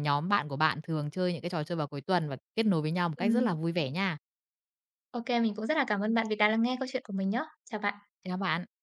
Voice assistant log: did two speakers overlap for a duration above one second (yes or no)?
no